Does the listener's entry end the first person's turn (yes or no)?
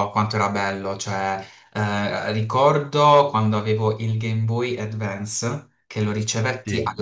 no